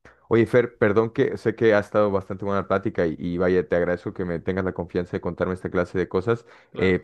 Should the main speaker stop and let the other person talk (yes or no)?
no